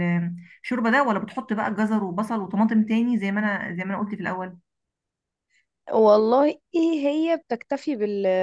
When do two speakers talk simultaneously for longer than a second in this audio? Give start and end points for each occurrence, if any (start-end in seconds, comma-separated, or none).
none